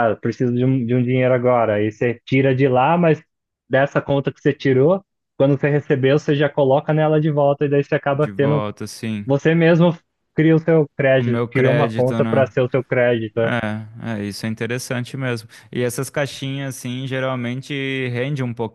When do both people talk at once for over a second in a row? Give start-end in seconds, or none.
11.2-12.5